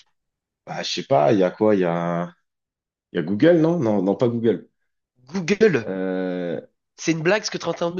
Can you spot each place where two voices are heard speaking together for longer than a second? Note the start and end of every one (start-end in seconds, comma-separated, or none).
none